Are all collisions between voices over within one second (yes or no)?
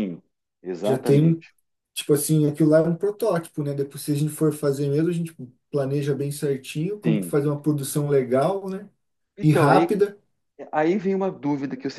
yes